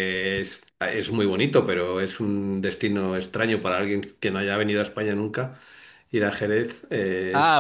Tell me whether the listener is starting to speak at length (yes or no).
yes